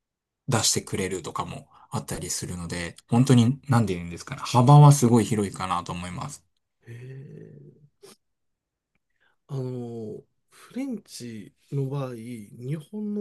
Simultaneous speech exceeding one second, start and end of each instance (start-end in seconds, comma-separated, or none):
none